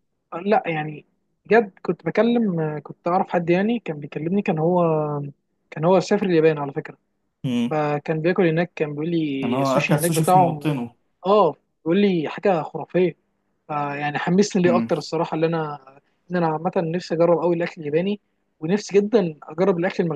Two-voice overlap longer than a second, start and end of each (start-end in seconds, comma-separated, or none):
9.4-10.8